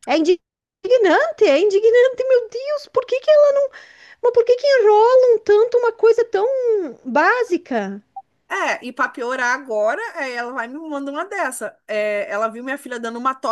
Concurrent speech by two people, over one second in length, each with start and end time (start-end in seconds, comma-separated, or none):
none